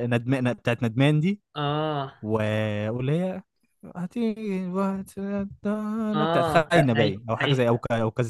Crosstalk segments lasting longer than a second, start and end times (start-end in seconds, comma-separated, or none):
6.1-7.7